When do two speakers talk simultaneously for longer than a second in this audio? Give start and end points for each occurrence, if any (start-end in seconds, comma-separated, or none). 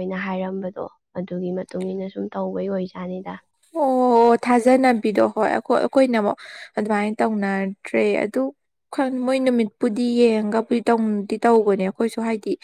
none